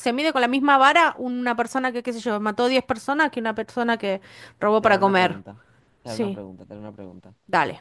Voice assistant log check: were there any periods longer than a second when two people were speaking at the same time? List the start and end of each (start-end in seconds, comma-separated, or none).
none